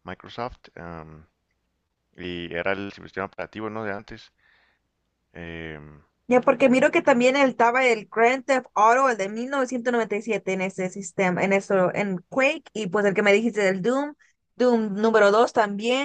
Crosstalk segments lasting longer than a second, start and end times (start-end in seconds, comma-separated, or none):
none